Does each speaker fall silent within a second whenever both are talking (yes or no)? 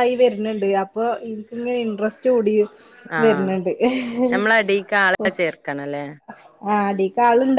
yes